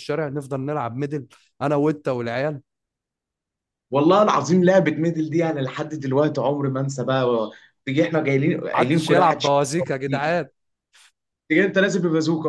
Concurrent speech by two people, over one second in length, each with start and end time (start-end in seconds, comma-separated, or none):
8.7-10.4